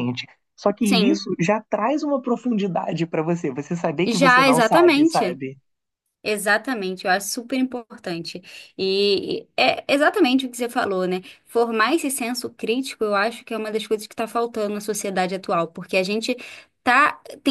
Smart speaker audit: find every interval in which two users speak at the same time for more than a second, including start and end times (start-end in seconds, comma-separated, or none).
4.0-5.4